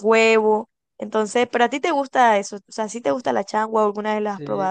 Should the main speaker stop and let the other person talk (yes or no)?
yes